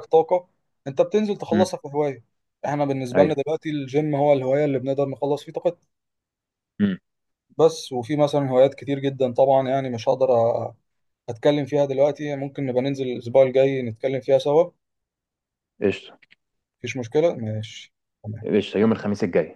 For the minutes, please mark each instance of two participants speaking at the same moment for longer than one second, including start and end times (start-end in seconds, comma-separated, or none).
none